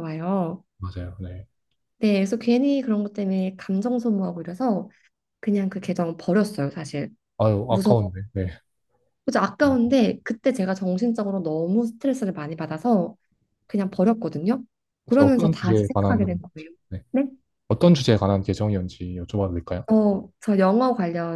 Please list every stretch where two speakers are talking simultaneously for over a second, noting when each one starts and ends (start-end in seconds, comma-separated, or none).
15.1-16.4